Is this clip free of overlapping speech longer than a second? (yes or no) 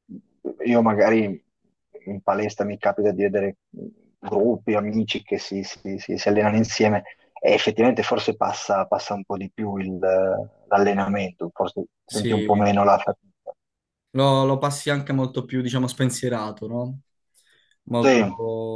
yes